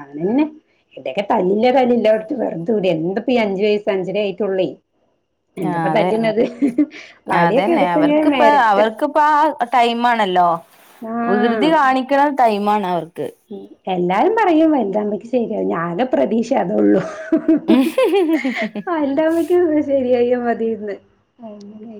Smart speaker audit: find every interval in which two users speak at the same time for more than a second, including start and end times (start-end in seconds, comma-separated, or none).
7.4-8.9